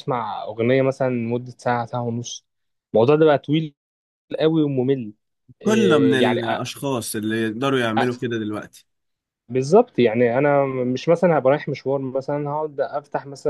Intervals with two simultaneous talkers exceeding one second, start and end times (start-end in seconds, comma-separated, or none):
none